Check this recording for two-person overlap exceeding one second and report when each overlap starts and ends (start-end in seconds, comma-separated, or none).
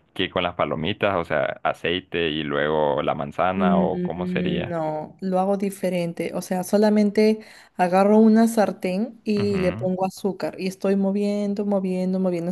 3.5-4.8